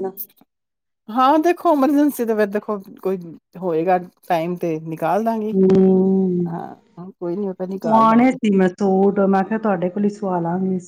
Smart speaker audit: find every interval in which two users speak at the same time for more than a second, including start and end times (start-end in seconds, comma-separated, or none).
none